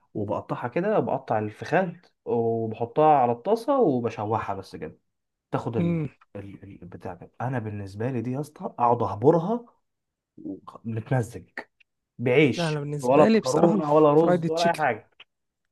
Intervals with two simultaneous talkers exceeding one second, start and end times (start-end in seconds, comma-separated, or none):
12.6-14.8